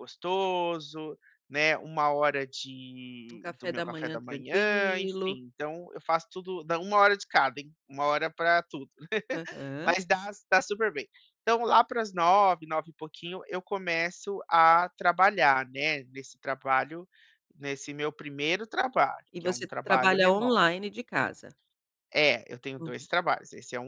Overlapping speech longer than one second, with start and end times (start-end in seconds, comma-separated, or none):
3.3-5.4, 19.3-20.6